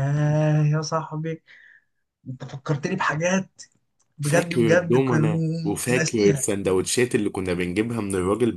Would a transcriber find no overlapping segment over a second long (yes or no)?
no